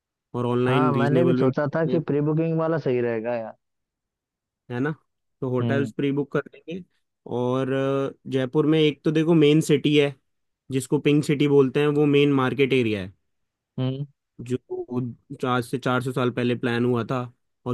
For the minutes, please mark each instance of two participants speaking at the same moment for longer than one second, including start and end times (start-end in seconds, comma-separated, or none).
0.7-2.1